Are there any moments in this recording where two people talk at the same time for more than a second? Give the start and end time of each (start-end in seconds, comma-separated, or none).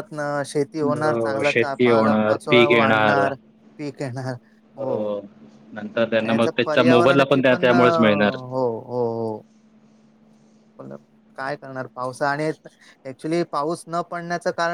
1.0-2.4, 6.2-8.3